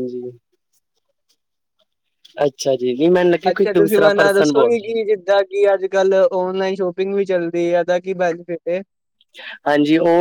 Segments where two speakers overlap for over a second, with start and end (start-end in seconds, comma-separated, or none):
none